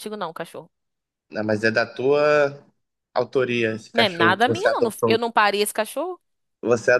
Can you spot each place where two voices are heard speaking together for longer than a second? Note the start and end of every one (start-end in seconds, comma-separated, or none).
3.9-5.2